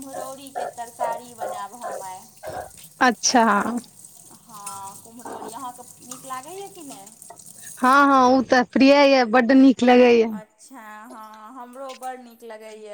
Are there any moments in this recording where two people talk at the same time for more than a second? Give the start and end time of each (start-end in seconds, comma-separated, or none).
none